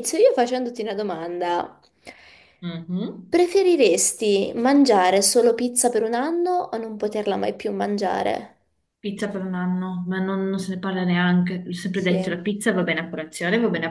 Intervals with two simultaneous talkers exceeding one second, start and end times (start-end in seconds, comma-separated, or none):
none